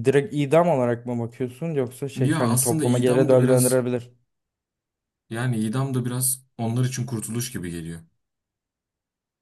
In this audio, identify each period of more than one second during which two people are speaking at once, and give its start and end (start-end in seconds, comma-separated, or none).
2.2-3.9